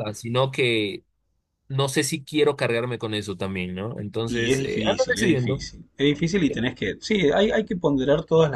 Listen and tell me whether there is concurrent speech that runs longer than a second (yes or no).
yes